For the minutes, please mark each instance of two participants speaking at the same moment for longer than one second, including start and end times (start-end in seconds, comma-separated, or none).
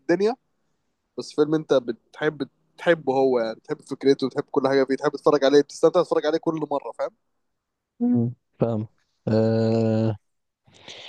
none